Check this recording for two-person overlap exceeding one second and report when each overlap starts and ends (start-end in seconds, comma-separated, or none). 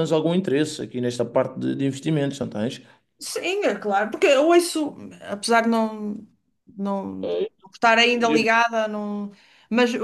none